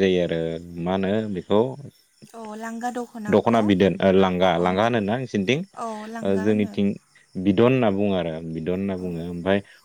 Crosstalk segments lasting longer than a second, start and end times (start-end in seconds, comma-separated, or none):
none